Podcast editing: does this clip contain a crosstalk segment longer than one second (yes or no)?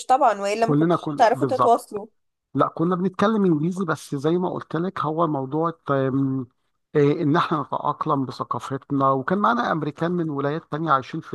yes